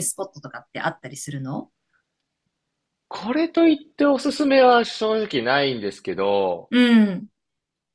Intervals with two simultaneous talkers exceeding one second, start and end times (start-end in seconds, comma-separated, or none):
none